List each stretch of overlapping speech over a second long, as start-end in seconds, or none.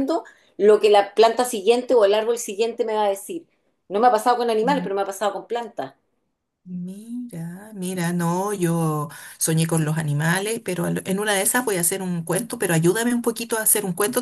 none